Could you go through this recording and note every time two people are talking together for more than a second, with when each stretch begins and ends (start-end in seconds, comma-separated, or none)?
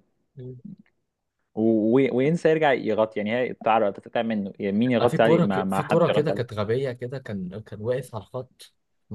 5.0-6.6